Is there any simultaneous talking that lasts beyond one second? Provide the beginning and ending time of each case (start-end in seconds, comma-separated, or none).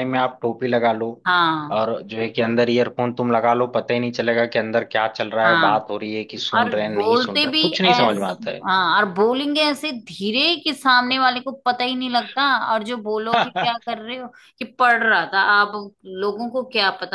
6.6-8.5